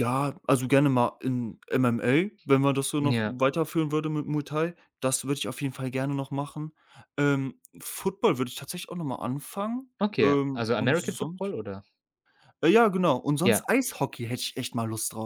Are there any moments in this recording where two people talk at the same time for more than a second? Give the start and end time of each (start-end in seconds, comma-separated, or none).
10.0-11.5